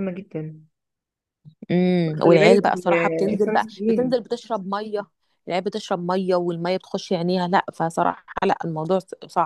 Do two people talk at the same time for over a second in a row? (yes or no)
yes